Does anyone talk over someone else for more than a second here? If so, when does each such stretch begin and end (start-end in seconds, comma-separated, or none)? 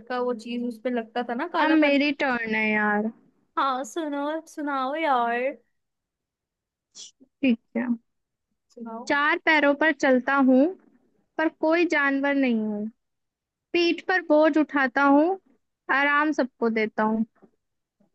none